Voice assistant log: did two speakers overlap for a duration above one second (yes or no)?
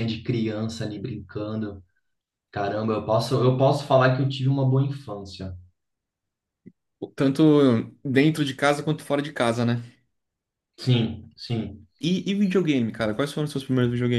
no